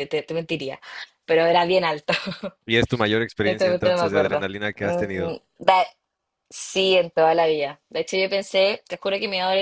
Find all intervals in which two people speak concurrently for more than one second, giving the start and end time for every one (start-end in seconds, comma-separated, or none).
3.4-5.4